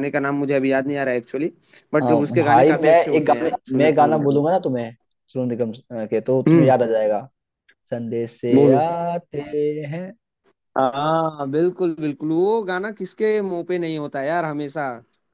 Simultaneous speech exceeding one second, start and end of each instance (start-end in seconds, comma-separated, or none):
2.0-4.4